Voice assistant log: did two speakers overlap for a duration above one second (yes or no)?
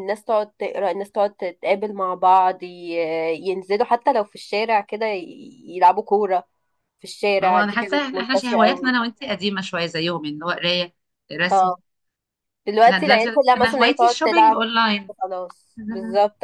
yes